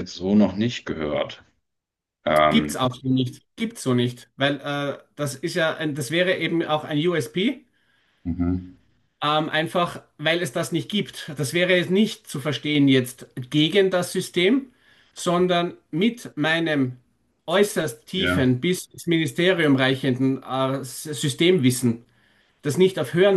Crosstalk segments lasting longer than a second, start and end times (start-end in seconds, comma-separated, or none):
none